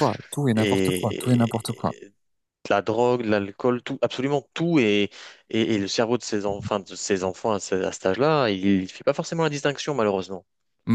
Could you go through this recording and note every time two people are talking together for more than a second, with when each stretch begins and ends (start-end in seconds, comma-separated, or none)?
0.6-2.0